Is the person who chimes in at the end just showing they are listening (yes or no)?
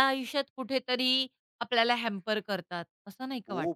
no